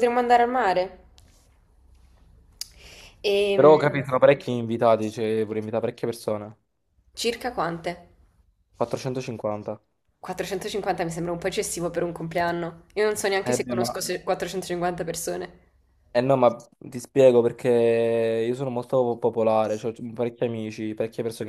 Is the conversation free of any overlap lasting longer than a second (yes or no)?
yes